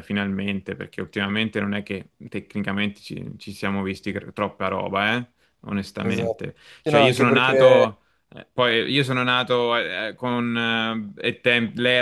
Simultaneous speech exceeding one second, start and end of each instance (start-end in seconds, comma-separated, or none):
6.0-7.9